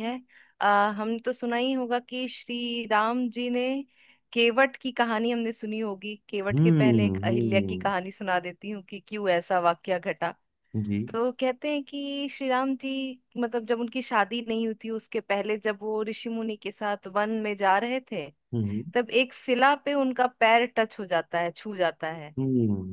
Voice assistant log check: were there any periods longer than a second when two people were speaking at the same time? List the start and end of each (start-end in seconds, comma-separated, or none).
6.6-7.9